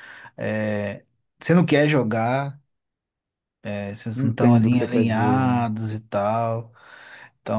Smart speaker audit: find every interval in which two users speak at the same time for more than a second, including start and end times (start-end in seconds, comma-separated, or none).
4.2-5.7